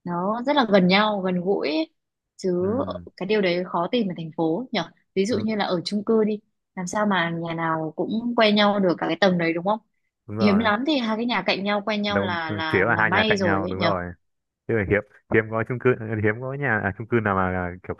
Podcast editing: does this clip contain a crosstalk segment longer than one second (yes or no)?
yes